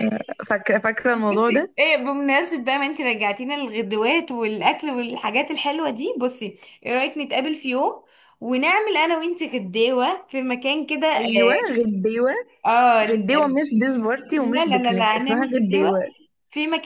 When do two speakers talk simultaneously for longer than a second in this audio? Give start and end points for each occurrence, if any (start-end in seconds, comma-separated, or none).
14.4-16.0